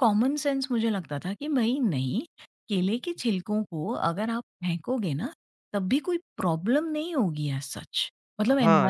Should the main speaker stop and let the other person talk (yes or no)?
yes